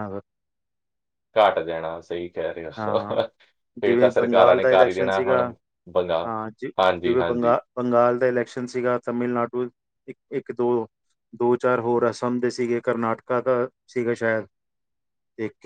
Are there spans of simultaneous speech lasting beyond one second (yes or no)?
yes